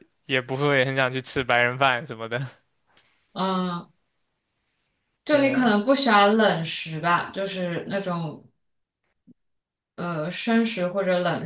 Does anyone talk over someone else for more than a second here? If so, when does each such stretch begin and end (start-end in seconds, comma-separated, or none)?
none